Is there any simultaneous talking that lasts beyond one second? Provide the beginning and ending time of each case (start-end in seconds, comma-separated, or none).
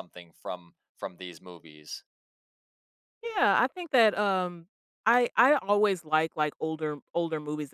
none